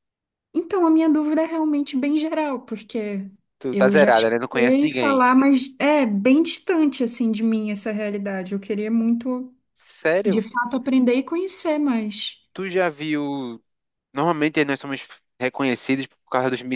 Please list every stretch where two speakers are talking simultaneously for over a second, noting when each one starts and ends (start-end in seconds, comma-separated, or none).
3.7-5.2